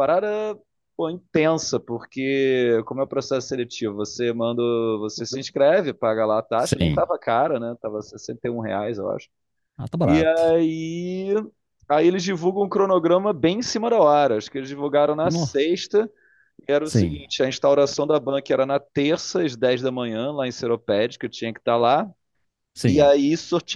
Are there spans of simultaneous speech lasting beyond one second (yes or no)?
no